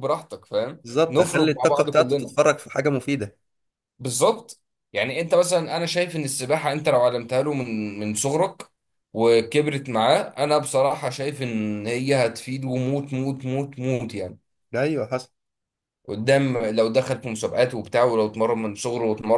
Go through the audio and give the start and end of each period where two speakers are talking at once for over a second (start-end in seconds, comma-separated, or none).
0.8-2.4